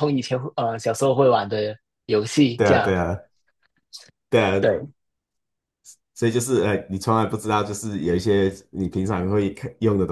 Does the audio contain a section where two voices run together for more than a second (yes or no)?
no